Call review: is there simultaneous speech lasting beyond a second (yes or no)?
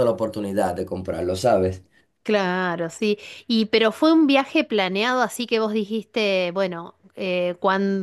no